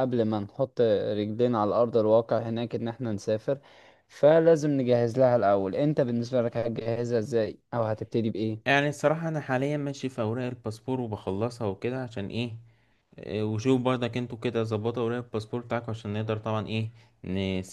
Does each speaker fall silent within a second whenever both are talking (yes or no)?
yes